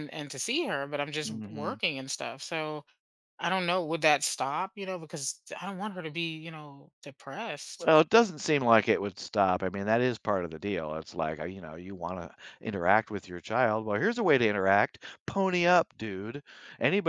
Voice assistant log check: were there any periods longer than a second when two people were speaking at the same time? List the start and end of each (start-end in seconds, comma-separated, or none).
none